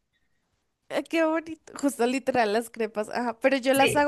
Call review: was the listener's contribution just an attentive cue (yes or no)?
yes